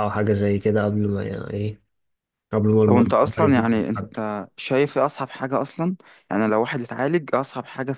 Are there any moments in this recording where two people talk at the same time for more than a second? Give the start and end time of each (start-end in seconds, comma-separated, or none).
2.9-4.1